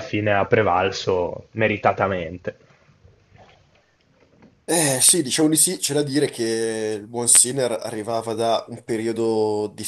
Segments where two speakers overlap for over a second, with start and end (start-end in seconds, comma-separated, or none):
none